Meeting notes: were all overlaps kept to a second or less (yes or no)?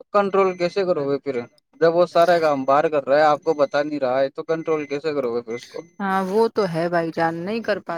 yes